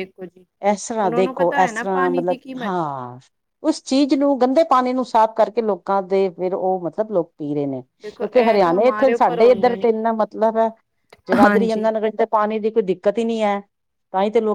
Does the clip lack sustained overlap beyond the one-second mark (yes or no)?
no